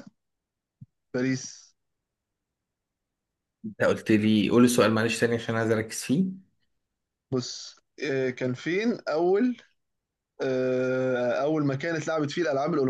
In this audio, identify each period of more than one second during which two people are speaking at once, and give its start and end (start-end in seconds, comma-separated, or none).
none